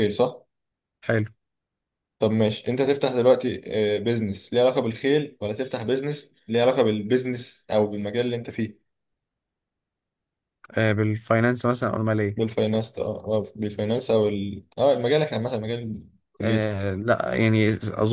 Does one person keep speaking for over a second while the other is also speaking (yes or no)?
no